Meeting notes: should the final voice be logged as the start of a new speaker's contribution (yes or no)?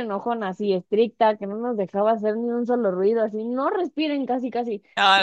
no